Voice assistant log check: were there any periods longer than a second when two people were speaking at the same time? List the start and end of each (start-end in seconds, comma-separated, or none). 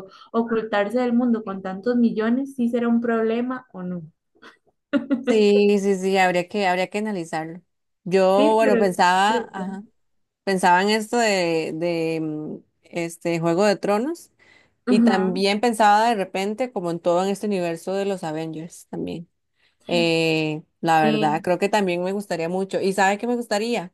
8.3-9.8